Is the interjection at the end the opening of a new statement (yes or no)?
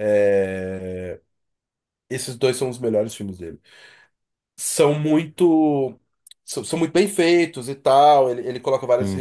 no